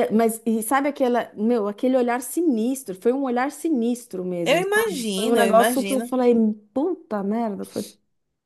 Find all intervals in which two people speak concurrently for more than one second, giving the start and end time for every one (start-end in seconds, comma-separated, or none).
4.4-6.2